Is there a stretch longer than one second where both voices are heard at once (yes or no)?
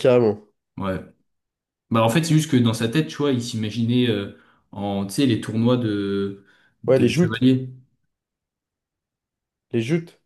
no